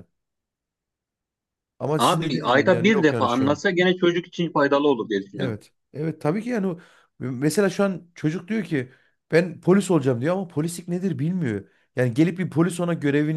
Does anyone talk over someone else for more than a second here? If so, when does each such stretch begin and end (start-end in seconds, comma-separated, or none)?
2.0-3.6